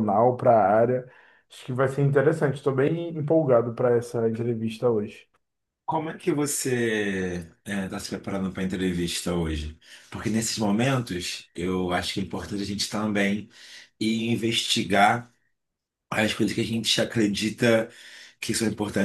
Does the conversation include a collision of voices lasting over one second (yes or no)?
no